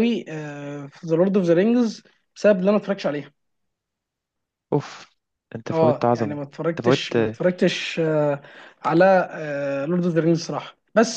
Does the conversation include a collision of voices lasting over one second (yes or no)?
yes